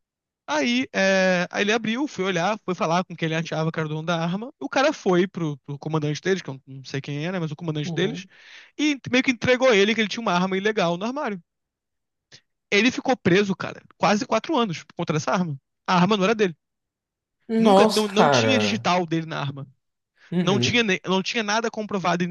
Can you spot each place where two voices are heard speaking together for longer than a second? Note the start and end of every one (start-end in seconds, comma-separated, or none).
17.6-18.9